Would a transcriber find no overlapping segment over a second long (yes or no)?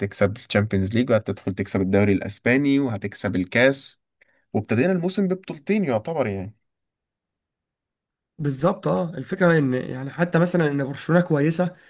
yes